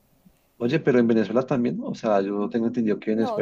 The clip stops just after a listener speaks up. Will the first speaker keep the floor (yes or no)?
no